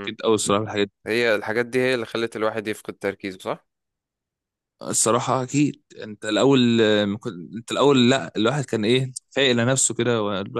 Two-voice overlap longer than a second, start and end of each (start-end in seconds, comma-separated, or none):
none